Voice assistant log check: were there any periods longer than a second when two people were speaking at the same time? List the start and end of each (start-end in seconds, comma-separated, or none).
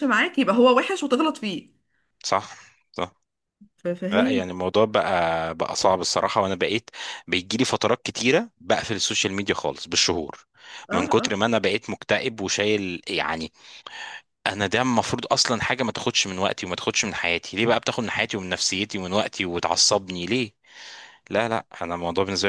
none